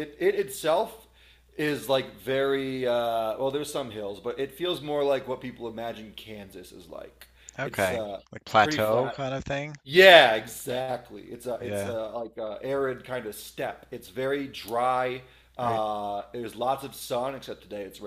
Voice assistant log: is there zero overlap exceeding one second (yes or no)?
no